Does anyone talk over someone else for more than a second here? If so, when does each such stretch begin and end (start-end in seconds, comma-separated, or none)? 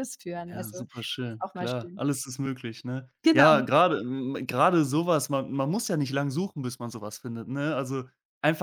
0.5-2.0